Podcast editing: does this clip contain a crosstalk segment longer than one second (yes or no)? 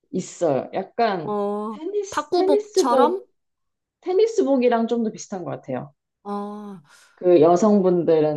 yes